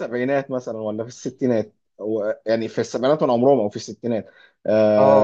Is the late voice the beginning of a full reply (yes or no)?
no